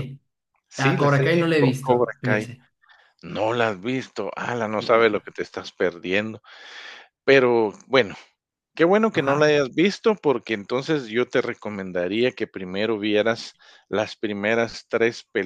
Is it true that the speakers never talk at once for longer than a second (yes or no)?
no